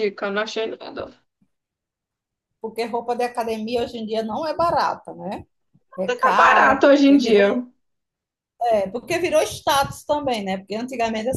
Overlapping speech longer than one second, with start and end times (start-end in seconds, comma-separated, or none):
6.2-7.4